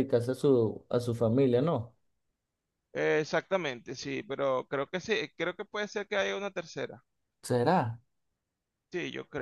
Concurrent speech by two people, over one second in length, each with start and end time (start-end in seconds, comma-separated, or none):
none